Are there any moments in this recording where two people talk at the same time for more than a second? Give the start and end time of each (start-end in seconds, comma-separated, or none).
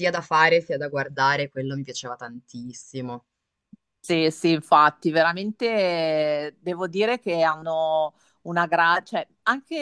none